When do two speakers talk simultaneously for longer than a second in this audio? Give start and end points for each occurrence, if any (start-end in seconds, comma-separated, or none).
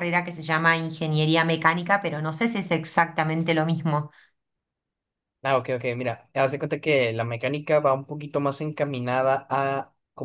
none